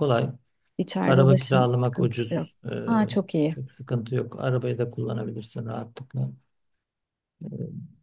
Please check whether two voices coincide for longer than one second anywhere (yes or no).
yes